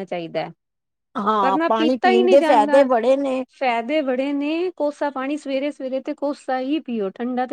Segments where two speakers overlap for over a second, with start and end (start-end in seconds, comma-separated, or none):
1.4-2.9